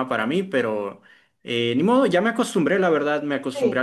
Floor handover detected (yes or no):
no